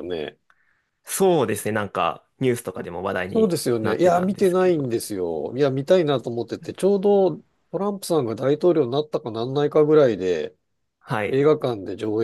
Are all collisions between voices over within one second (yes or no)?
no